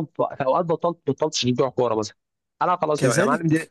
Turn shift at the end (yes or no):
yes